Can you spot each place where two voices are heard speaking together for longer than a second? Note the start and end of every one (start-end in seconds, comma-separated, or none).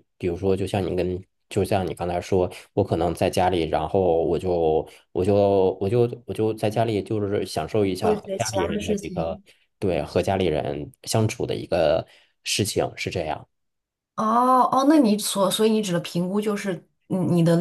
8.0-9.4